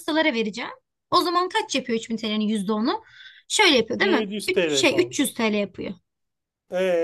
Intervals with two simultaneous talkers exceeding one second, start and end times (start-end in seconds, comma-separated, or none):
4.0-5.3